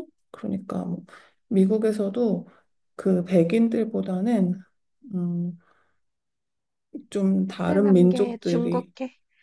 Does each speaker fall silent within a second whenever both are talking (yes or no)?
no